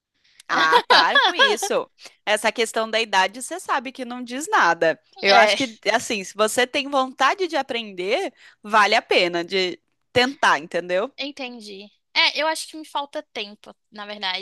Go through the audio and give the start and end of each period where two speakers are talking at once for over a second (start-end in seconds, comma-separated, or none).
none